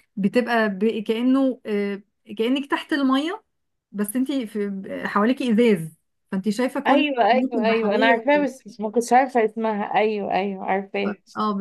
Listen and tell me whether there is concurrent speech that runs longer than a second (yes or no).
yes